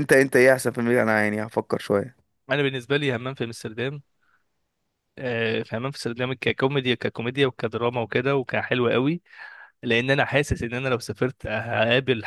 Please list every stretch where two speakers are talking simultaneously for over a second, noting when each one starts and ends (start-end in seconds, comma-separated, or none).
none